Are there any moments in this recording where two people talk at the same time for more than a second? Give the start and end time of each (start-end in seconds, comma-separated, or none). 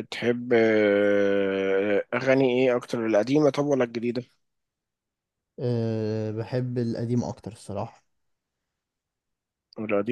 none